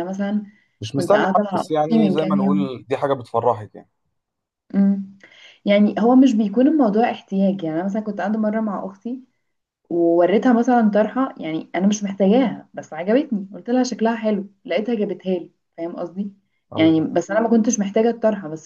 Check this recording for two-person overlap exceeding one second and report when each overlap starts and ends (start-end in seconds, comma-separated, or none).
0.9-2.7